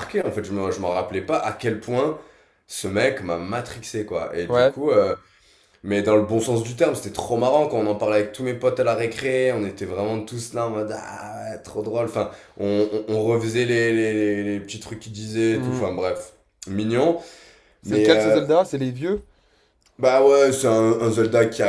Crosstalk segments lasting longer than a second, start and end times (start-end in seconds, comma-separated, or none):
none